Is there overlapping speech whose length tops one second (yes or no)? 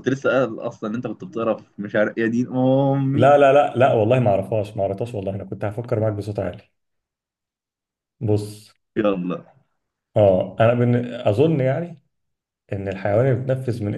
no